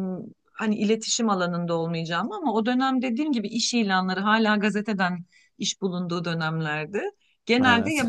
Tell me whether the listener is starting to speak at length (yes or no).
no